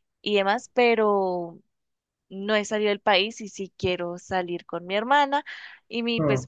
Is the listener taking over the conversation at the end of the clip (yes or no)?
no